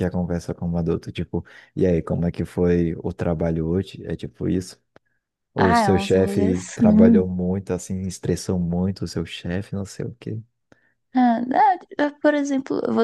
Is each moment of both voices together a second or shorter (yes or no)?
no